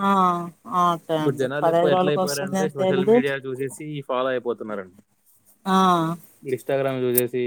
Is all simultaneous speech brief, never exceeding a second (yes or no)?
no